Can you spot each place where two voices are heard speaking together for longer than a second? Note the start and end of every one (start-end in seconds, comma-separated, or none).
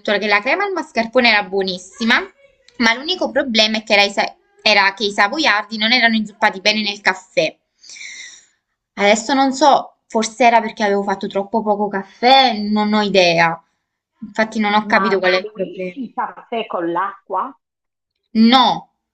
14.8-16.0